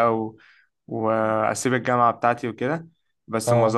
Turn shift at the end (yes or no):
no